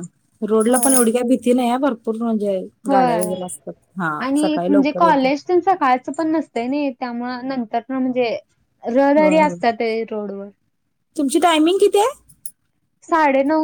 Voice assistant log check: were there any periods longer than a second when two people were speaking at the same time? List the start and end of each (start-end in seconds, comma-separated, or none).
none